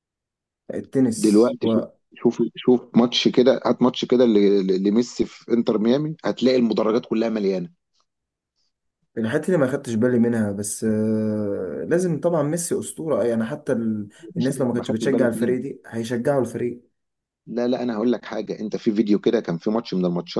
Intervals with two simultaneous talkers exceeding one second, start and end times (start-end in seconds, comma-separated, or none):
14.2-15.6